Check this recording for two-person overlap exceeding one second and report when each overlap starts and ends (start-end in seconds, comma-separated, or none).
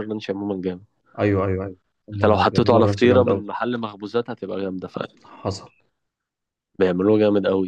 2.1-3.4